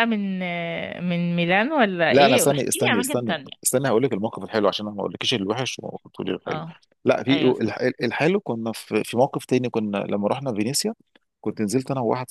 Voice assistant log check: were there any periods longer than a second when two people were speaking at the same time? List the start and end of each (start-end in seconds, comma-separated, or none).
2.1-3.5